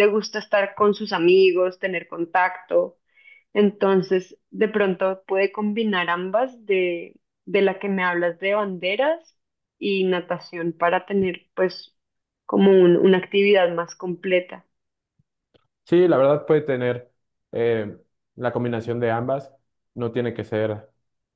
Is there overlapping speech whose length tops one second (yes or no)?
no